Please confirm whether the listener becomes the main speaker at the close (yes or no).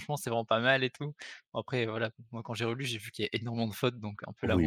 yes